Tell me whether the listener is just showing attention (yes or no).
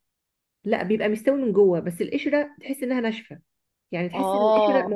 yes